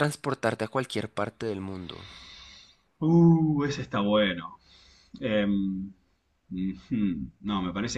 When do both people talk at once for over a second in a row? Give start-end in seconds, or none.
none